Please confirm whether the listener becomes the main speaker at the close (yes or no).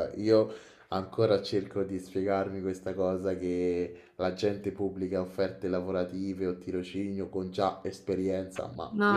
no